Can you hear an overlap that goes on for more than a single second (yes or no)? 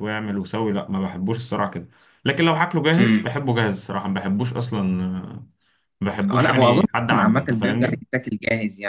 yes